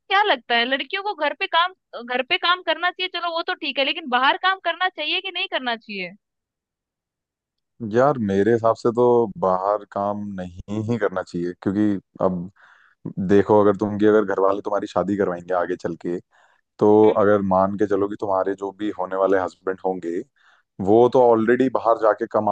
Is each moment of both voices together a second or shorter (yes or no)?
yes